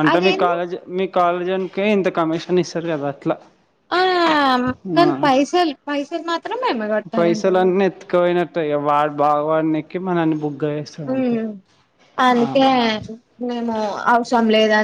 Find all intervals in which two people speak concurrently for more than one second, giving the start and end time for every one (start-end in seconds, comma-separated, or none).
none